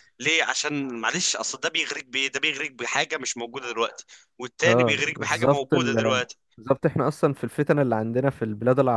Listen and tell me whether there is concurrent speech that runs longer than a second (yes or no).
yes